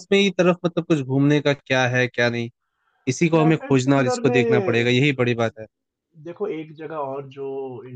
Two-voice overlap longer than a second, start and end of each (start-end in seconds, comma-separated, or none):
3.3-4.9